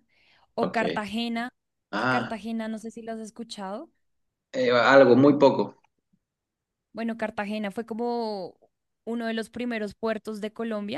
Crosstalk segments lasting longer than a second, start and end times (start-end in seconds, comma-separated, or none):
none